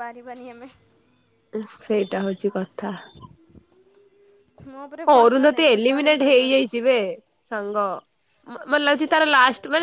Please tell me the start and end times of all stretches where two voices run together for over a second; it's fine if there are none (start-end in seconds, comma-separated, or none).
5.1-6.6